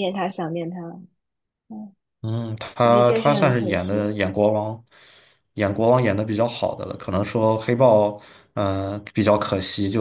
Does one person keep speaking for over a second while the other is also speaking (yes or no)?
yes